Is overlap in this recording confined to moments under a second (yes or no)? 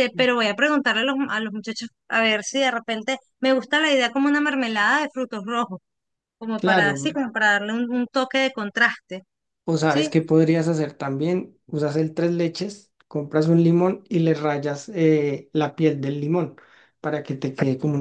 yes